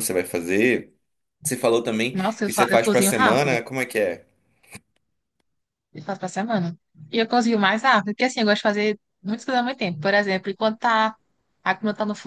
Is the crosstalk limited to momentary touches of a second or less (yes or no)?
no